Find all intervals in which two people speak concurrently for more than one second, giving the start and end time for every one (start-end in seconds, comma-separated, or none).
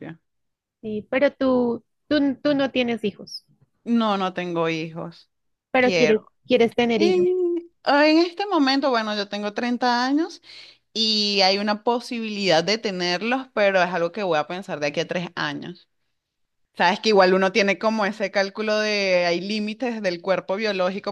none